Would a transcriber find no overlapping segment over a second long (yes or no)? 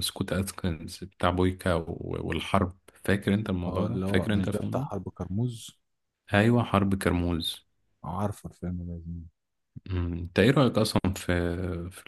no